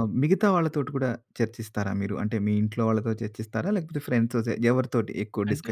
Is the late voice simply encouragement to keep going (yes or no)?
no